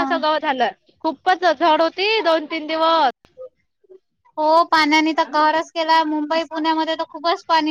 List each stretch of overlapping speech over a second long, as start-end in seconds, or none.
none